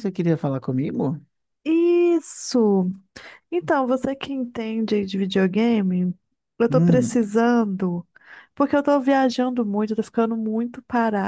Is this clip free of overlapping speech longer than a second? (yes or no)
yes